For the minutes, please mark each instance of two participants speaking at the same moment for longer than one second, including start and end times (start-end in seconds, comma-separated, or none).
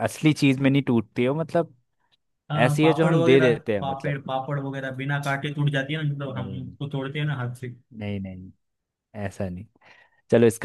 2.6-4.1